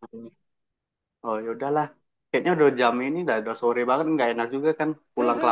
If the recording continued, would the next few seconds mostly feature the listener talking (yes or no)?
yes